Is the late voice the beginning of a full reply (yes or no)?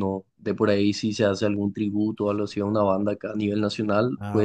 no